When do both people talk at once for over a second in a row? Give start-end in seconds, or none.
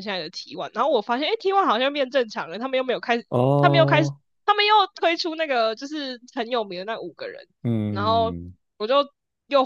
none